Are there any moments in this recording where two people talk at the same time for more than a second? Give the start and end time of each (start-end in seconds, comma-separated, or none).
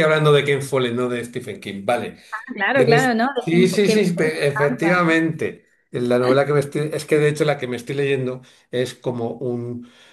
2.7-5.2